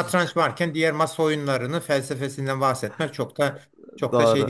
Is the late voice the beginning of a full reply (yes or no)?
yes